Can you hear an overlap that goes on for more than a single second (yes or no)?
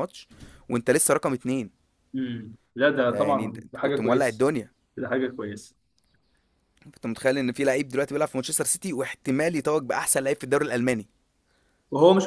yes